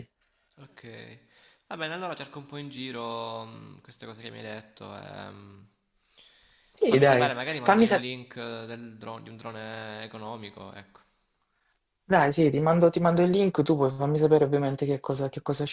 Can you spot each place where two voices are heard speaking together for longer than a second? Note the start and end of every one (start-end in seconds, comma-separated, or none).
6.8-8.1